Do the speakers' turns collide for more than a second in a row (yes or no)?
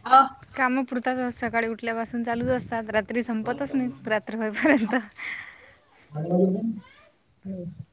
no